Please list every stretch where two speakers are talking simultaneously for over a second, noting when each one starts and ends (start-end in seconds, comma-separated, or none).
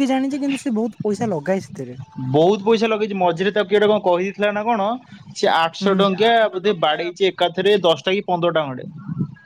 none